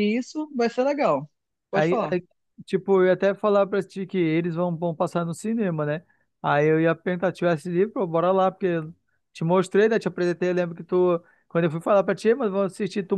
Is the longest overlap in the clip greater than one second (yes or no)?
no